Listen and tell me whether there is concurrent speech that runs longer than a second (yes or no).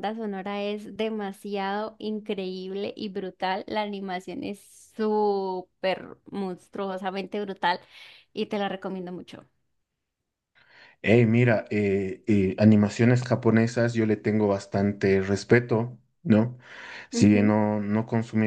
no